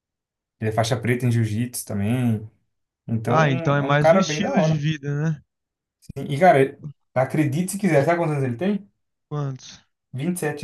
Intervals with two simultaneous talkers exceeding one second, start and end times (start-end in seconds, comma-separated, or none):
3.3-4.8